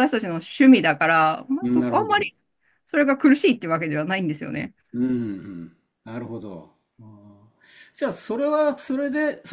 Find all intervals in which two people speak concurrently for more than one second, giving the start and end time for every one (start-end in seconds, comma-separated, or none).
none